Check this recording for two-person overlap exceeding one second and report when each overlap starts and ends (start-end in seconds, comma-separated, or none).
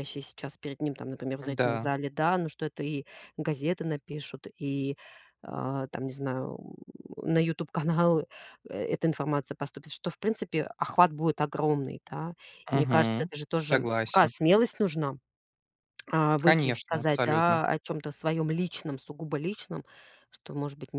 12.7-14.3, 16.4-17.6